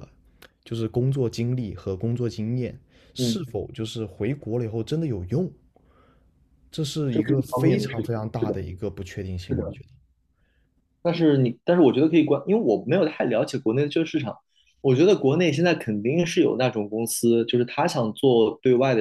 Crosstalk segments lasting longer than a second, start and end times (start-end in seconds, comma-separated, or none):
7.1-8.6